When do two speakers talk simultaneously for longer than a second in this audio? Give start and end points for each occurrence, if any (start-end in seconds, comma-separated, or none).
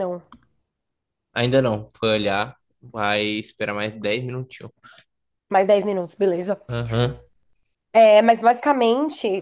none